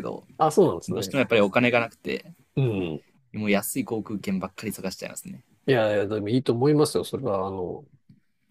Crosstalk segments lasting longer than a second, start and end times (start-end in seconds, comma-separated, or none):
none